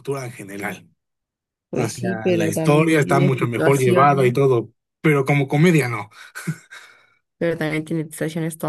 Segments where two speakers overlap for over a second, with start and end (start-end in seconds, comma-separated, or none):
1.7-4.3